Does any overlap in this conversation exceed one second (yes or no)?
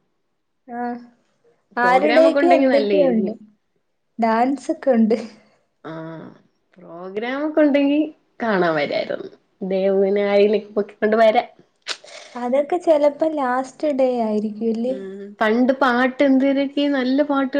yes